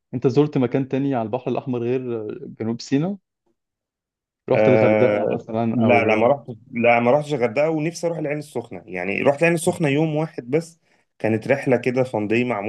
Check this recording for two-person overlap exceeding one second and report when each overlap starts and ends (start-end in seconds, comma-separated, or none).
4.5-6.3